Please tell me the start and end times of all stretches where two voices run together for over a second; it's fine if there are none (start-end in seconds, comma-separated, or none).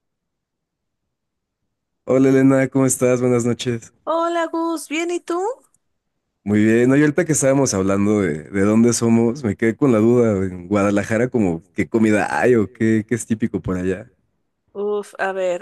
none